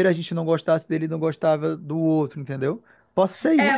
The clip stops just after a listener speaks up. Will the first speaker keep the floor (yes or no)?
no